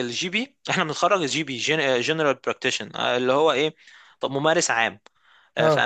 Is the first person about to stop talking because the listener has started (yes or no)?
no